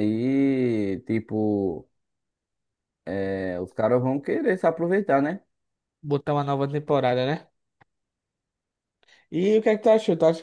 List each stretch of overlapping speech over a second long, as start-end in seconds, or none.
none